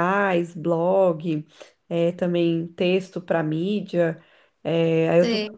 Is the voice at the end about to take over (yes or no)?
no